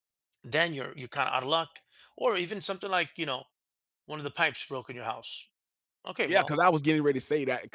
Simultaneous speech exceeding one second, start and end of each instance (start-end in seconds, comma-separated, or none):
none